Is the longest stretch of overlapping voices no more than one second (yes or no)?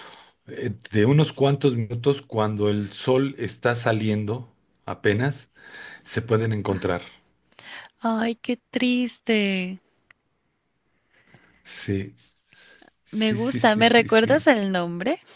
no